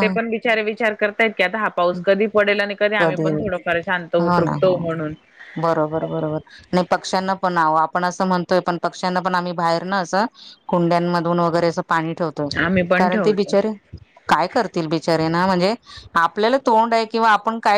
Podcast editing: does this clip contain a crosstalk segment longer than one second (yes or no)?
no